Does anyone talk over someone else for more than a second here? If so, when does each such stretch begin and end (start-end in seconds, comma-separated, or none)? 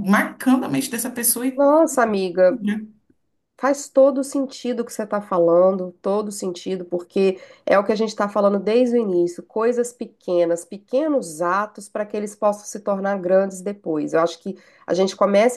none